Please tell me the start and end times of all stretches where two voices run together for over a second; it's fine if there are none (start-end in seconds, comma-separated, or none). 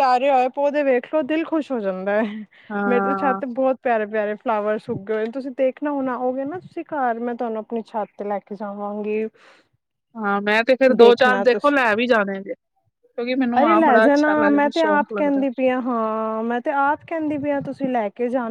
13.6-15.4